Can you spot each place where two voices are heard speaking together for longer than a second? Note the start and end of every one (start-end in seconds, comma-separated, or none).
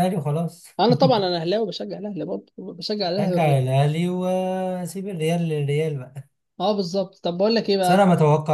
none